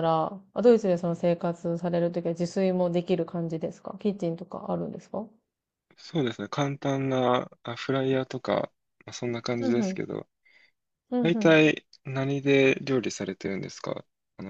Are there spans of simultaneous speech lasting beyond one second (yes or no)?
no